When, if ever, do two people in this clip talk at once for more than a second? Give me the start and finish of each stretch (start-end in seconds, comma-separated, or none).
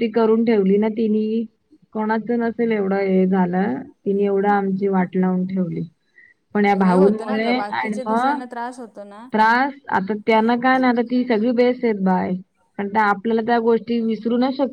6.8-8.4